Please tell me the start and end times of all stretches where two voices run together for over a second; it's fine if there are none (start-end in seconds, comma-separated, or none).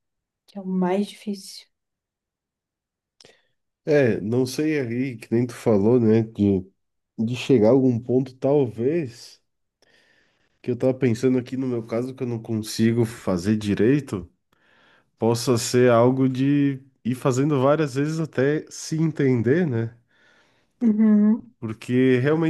none